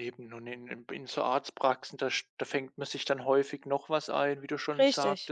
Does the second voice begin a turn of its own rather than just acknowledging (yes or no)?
no